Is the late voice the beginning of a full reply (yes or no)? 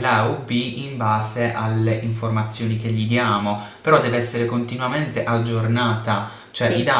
no